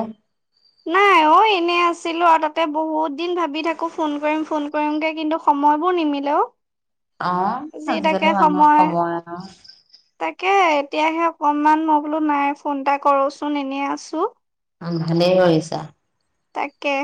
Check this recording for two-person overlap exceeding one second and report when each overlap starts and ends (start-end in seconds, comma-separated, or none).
none